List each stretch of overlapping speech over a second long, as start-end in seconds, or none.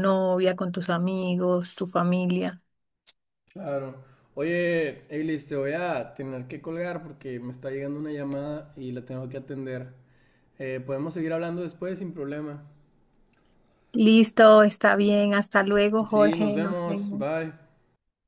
16.1-17.3